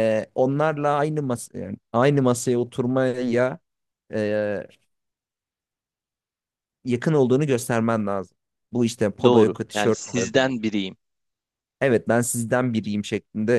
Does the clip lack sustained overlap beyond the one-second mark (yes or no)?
no